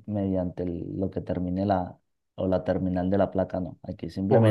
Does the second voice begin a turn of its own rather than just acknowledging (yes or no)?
yes